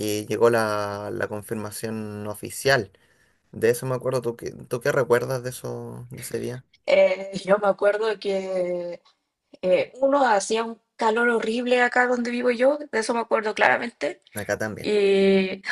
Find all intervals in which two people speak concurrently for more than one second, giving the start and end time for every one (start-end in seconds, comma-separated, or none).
none